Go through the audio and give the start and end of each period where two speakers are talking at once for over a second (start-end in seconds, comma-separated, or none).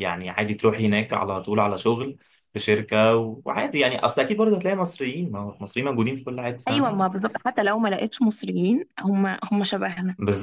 none